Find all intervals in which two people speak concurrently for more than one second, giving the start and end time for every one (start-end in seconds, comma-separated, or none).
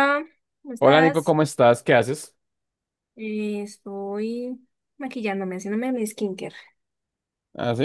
none